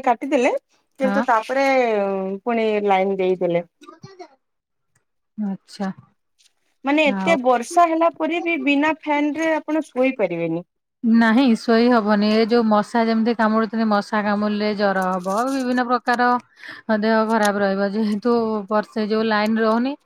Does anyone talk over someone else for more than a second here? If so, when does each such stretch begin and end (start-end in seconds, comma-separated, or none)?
none